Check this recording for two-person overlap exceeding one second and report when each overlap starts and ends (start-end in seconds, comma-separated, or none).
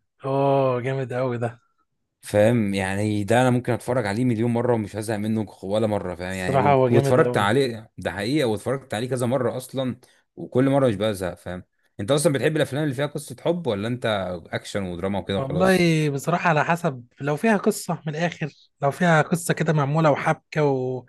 6.3-7.5